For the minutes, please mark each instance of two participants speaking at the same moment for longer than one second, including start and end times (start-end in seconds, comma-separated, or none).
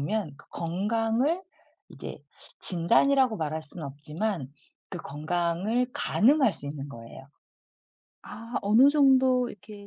none